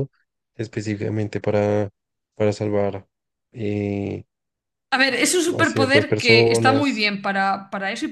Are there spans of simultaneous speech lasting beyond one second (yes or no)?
yes